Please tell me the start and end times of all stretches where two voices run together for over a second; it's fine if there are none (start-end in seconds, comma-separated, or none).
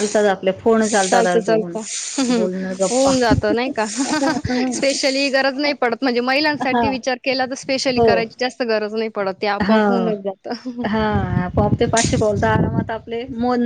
none